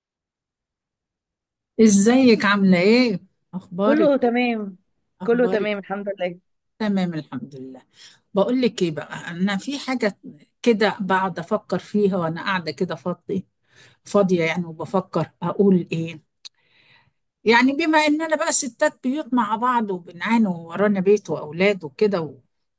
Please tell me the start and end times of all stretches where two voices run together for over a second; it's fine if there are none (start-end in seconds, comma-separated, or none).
none